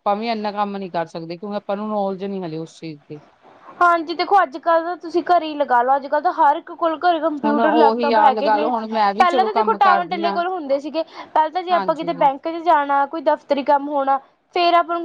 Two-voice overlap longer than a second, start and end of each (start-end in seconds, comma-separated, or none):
7.5-10.4